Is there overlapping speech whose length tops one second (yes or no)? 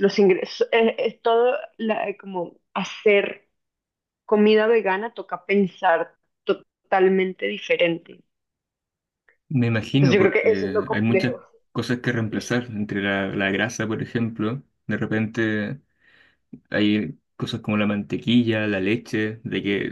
yes